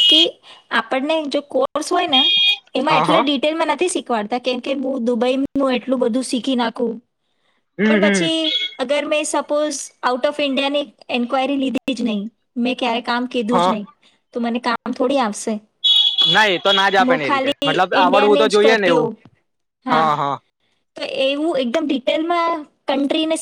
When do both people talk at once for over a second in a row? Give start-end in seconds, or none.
17.1-19.1